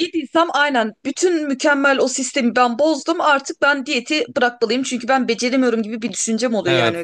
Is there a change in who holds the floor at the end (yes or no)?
yes